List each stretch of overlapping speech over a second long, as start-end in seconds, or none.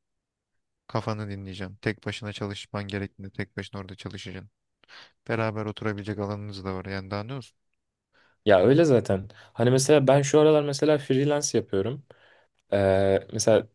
none